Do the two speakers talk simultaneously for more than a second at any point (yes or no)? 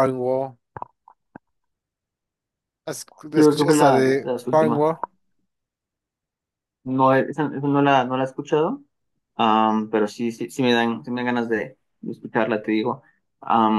yes